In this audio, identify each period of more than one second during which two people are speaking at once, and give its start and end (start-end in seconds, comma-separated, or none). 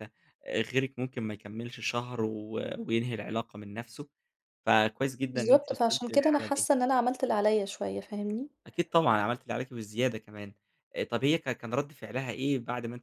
5.3-6.7